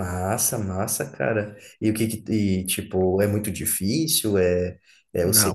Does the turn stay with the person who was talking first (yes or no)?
no